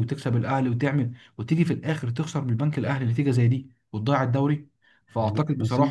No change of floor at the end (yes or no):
yes